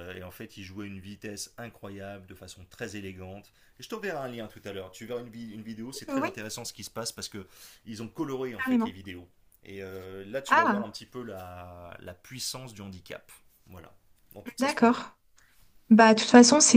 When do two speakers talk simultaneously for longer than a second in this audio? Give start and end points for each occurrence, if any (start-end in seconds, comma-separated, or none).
none